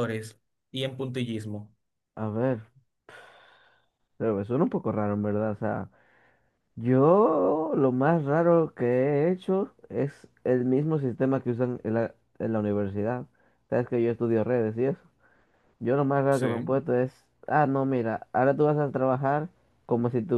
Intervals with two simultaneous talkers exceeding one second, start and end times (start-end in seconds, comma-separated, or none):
none